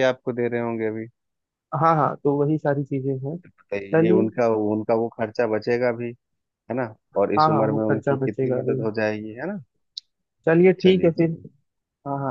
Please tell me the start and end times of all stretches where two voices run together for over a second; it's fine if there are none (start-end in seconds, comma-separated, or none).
7.2-8.8